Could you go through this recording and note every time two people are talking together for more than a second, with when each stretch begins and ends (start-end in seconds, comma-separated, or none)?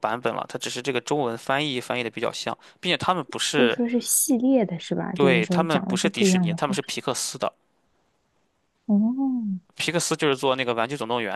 5.1-6.9